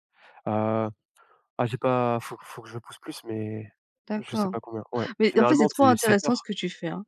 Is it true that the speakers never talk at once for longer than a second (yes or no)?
no